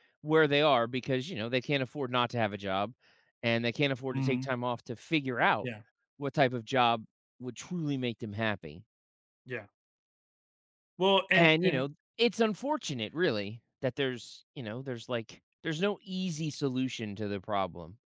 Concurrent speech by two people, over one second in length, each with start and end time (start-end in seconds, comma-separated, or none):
none